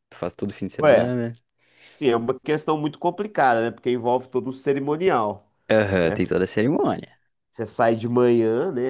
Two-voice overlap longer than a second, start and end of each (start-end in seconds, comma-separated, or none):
none